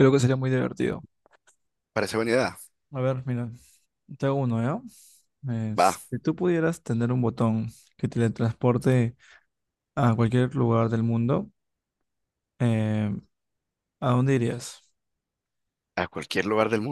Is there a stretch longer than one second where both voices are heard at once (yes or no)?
no